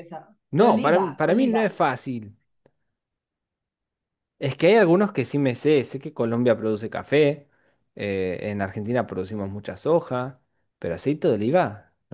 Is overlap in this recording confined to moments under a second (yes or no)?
no